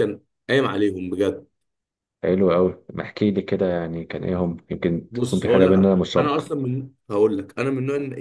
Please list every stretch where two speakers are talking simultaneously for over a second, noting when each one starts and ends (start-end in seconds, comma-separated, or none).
5.1-6.5